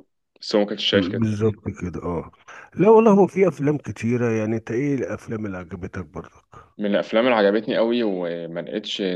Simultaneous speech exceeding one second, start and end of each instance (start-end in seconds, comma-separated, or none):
none